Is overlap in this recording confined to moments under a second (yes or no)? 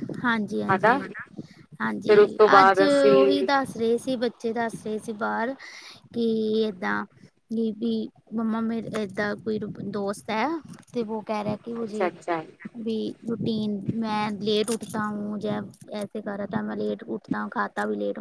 no